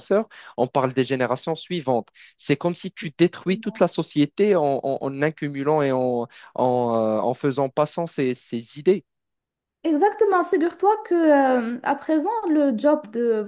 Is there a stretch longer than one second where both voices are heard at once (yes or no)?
no